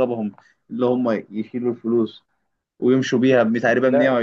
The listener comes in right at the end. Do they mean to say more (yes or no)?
no